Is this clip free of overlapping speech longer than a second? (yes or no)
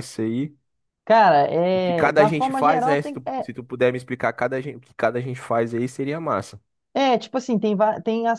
no